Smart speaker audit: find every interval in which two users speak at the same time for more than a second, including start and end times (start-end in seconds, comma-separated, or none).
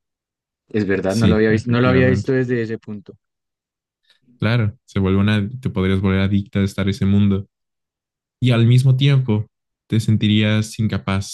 1.1-2.3